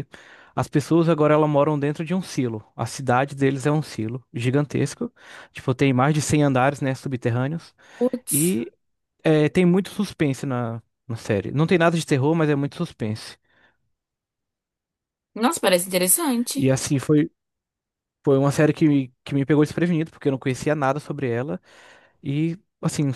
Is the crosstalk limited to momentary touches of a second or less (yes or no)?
yes